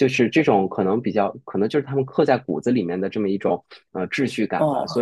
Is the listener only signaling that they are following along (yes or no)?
no